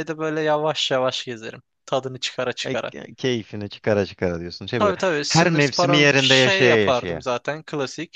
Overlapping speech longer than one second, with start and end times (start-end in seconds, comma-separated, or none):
4.8-7.2